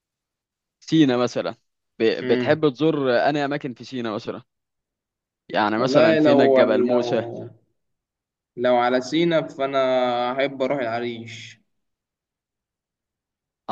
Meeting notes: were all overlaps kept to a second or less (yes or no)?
no